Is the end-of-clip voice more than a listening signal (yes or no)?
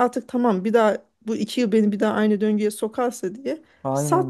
no